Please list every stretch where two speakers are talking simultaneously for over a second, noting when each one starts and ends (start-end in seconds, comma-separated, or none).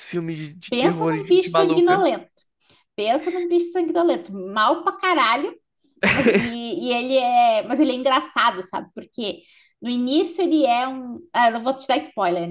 0.7-2.1